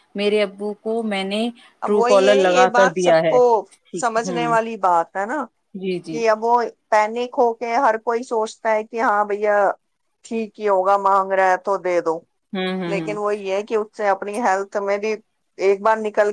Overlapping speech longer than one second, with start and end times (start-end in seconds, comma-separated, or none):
1.8-3.4